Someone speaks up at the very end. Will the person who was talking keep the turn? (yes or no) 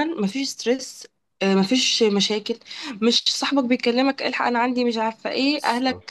yes